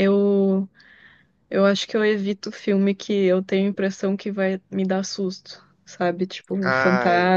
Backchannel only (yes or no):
yes